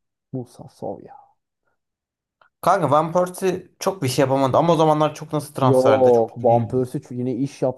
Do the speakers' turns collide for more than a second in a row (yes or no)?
yes